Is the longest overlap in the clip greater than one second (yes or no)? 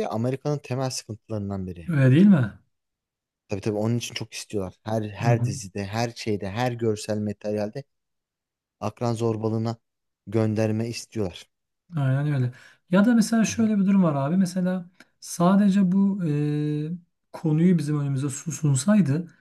no